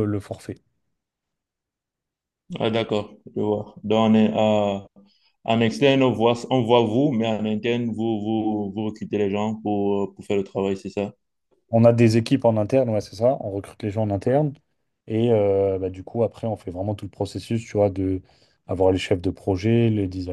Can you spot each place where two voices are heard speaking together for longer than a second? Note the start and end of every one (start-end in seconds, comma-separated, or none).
none